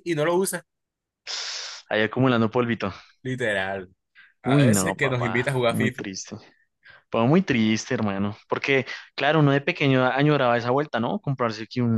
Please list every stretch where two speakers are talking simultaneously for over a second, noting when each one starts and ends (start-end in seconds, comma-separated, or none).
4.4-6.0